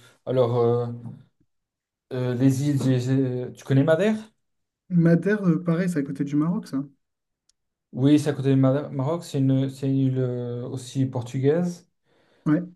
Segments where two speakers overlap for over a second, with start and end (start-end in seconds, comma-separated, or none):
none